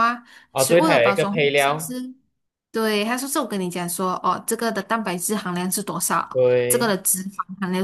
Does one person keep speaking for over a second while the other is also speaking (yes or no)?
yes